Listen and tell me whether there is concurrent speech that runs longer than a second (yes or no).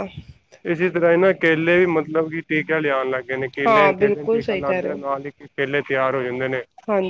yes